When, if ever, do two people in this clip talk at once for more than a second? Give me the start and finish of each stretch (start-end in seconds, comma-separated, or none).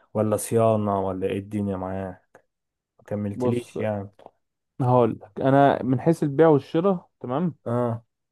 none